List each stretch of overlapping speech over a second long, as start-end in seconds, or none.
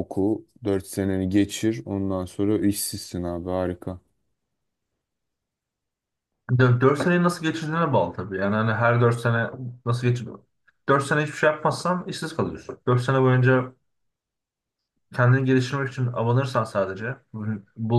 none